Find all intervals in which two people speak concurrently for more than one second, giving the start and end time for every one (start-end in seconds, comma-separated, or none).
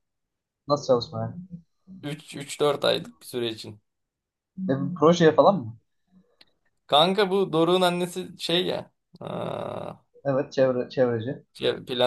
none